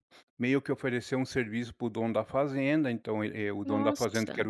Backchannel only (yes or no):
yes